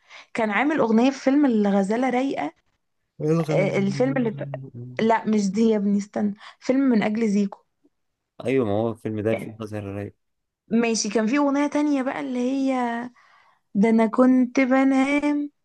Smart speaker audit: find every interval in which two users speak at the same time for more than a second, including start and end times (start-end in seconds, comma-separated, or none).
none